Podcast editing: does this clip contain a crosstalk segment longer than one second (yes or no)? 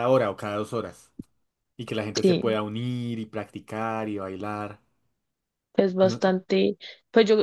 no